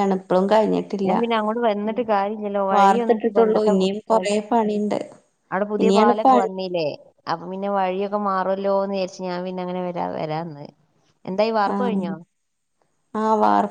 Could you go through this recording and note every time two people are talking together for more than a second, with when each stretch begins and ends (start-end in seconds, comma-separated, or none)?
2.8-4.4